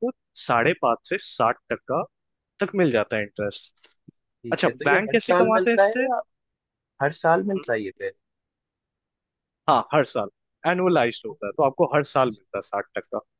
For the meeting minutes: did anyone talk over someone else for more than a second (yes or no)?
yes